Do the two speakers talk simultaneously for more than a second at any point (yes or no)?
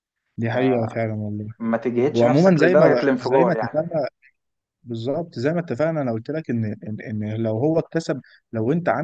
yes